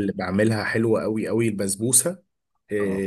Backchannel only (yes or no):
yes